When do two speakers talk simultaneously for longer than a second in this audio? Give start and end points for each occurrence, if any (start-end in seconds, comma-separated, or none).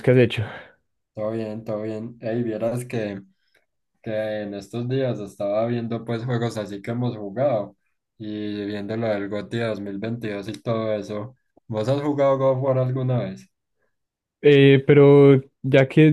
none